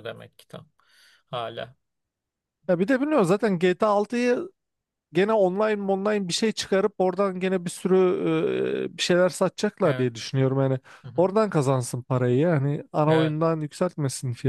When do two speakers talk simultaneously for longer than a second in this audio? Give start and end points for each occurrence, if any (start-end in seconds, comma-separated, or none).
none